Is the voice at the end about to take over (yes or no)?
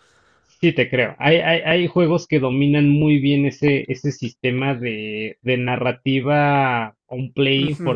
yes